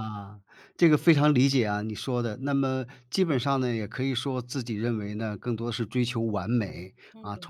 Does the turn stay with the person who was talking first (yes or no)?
yes